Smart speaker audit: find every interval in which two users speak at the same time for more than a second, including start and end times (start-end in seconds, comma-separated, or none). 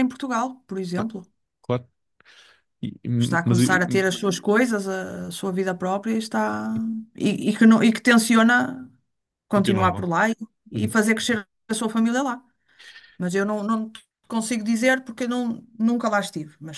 none